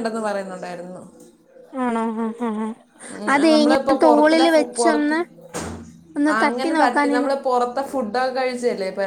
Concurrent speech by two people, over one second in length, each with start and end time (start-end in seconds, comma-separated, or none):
3.5-5.2